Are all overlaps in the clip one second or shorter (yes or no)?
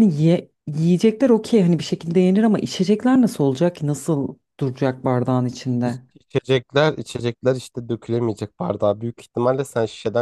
yes